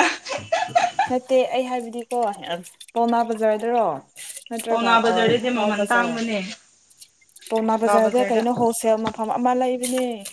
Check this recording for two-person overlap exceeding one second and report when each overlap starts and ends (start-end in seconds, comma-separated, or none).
4.7-6.2